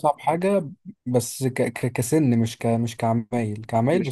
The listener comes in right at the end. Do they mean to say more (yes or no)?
no